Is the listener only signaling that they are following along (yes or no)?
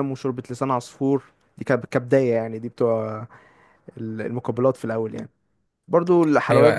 no